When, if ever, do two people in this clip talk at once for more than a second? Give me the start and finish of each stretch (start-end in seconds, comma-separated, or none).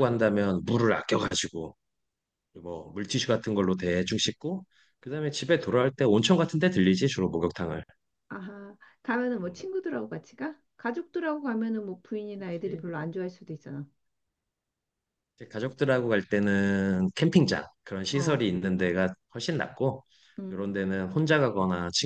none